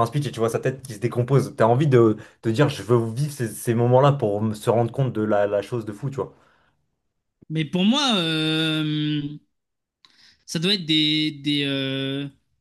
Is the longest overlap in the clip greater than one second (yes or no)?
no